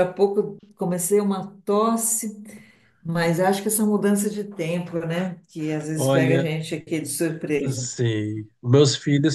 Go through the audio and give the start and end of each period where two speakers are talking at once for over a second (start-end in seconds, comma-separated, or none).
none